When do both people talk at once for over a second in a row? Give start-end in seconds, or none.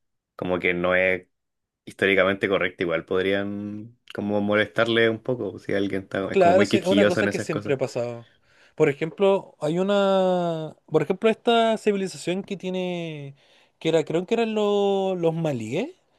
6.3-7.8